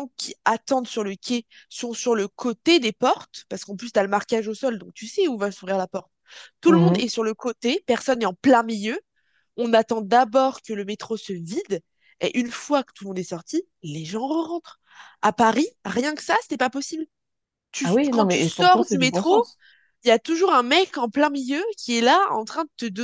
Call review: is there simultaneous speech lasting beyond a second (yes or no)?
yes